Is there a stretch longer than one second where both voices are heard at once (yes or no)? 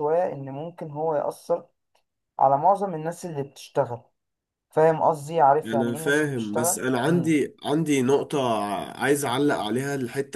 yes